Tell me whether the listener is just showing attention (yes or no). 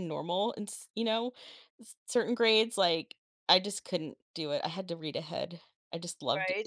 yes